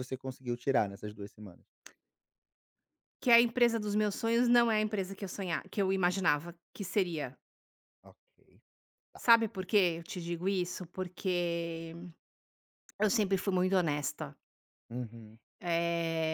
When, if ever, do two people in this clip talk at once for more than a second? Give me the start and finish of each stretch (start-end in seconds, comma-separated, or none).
none